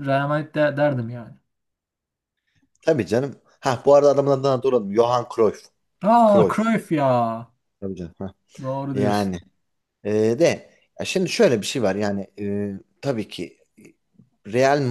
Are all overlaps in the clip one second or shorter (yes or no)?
yes